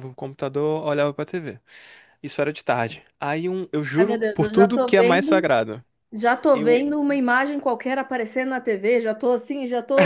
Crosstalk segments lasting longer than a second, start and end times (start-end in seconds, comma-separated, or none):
4.0-5.5